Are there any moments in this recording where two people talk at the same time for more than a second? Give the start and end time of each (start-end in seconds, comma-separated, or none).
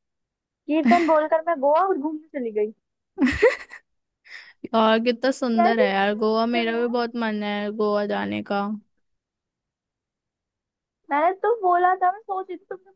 5.6-6.9